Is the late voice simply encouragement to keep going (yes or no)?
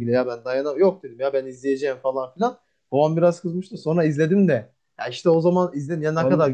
no